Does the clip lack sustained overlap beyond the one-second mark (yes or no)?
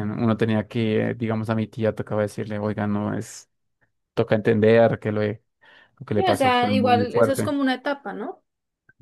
no